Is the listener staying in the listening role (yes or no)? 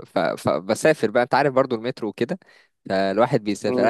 yes